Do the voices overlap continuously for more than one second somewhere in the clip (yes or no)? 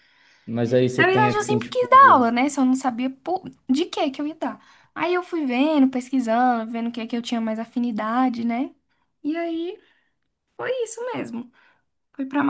yes